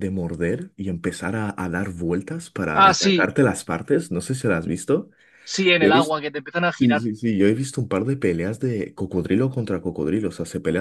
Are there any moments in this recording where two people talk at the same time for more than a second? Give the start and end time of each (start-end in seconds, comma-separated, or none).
none